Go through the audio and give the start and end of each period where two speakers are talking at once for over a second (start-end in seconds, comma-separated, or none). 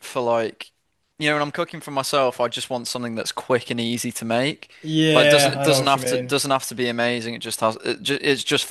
5.1-6.4